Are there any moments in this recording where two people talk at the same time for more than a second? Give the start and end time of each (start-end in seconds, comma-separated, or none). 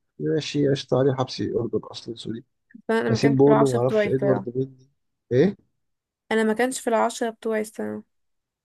3.1-4.5